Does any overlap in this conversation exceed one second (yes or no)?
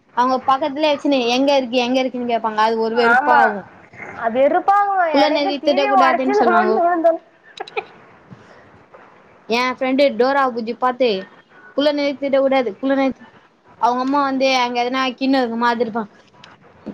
yes